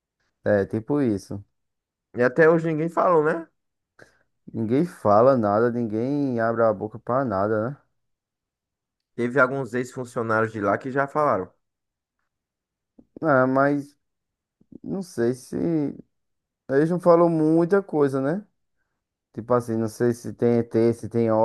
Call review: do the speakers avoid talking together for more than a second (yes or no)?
yes